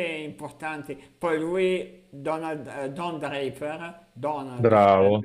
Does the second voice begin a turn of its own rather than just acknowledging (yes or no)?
no